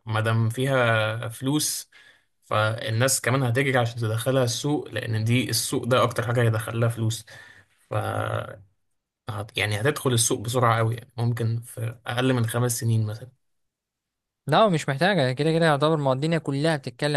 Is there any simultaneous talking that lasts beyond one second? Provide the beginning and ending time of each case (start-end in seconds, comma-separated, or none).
none